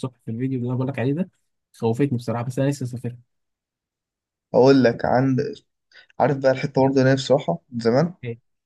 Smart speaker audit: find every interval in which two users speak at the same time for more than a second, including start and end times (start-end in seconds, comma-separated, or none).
none